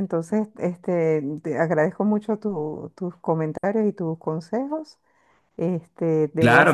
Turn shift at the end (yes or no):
yes